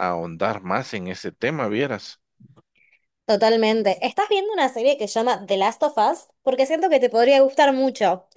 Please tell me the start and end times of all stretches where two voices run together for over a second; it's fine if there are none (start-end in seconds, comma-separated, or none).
none